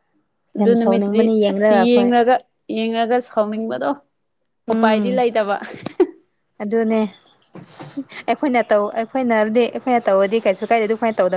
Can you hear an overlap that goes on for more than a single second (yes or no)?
yes